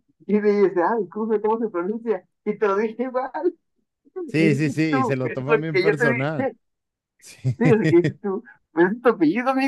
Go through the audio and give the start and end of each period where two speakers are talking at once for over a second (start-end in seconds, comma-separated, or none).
4.4-6.5